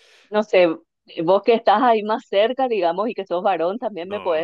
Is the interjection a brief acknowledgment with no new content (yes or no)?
yes